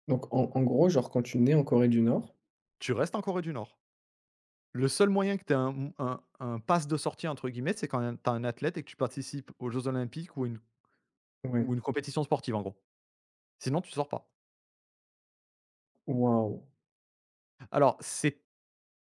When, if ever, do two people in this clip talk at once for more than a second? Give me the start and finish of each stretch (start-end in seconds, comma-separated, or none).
none